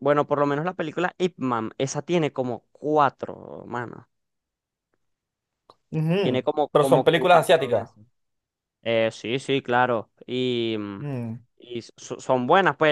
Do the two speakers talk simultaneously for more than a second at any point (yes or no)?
yes